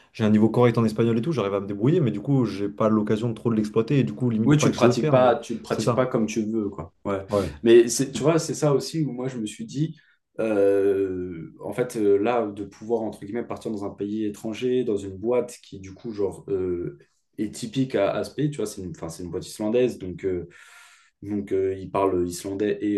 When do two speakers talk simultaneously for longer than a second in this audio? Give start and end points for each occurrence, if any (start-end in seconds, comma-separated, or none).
4.4-6.0